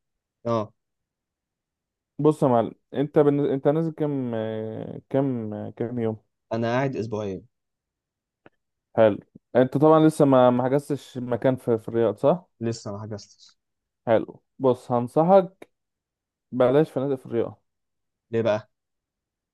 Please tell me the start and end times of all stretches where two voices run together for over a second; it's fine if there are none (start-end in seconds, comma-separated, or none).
none